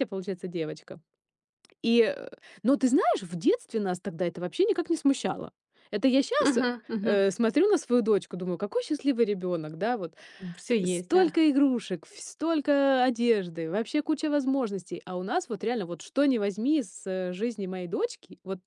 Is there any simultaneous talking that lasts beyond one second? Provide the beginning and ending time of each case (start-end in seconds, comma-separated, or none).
none